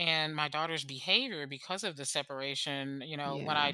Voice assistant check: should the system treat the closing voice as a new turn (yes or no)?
no